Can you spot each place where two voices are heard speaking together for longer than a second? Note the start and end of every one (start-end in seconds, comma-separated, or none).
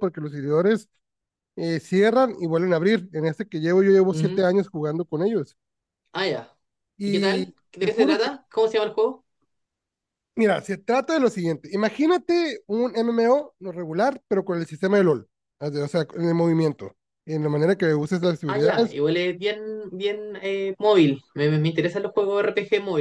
7.0-8.3